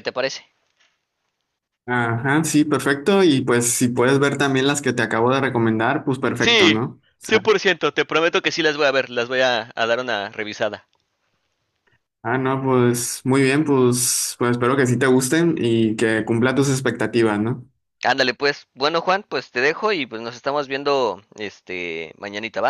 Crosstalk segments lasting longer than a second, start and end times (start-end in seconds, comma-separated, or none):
none